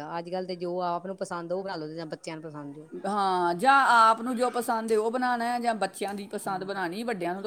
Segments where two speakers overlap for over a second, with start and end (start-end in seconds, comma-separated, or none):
none